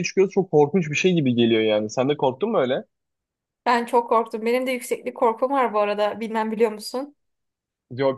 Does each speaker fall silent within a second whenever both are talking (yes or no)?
yes